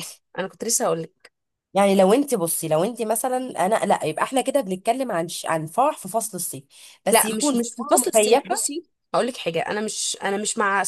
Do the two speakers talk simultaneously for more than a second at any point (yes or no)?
yes